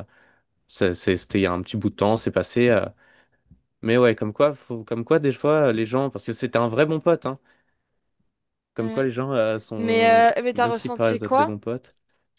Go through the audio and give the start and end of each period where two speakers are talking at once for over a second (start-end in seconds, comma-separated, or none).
9.8-11.5